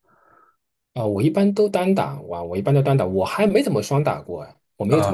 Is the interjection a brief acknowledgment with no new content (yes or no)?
no